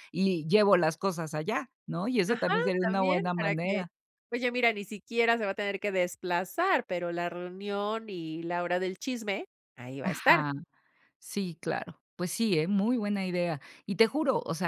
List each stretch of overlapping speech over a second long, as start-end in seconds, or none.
2.3-3.8